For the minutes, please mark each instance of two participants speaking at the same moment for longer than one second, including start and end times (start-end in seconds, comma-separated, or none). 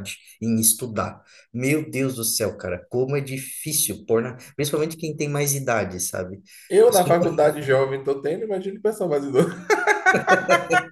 none